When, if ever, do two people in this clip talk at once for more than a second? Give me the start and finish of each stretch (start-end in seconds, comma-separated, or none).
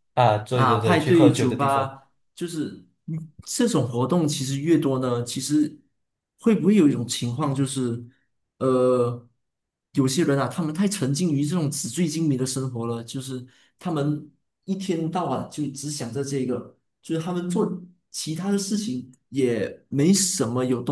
0.5-2.0